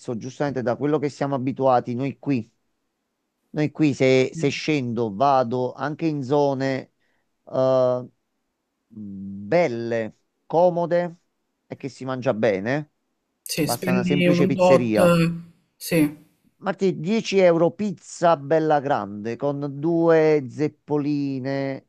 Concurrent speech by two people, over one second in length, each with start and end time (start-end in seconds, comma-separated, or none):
13.6-14.9